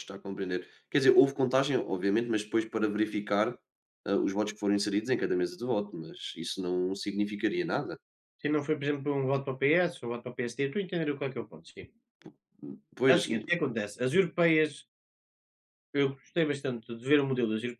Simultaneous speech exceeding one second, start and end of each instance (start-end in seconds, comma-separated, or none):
none